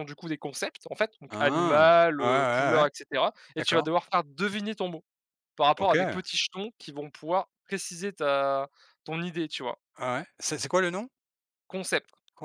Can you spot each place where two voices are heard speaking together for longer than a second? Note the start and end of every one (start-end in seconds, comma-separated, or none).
1.3-2.9